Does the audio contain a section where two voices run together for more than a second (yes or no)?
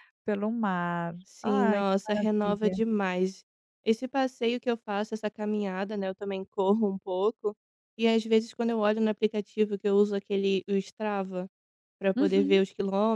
yes